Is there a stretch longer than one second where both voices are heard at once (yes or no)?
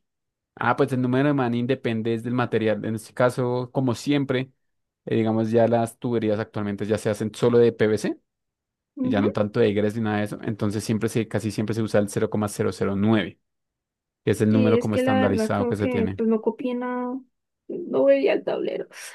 yes